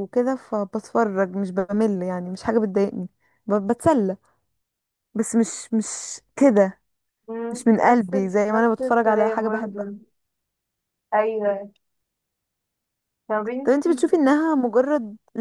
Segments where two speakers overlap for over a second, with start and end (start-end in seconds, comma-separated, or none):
7.5-9.9